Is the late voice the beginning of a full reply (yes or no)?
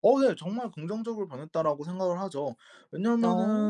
no